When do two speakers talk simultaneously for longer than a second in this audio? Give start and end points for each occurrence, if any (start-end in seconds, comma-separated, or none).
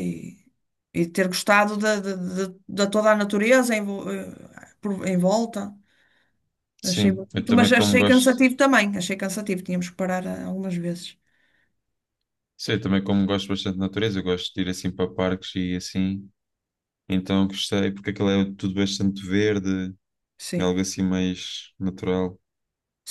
6.8-8.4